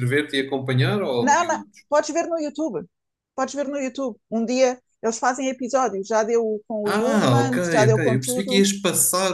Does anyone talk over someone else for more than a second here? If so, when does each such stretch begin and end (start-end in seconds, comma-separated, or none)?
6.8-8.7